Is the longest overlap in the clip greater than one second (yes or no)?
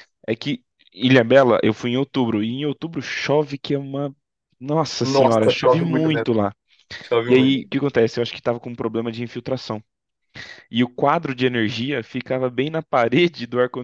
yes